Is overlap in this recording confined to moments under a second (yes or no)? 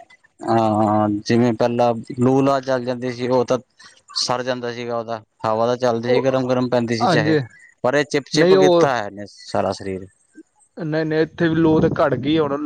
yes